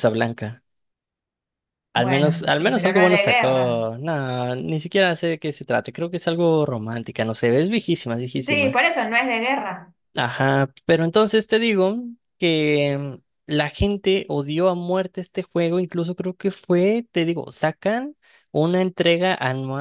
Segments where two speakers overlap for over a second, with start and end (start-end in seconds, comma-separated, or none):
1.9-3.8